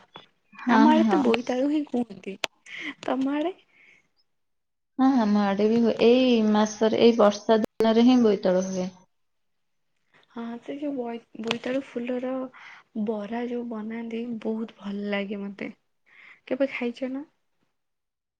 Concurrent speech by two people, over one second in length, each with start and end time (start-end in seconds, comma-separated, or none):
none